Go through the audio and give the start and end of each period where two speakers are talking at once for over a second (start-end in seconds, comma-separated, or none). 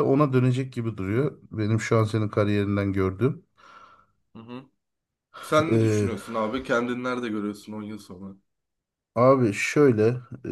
none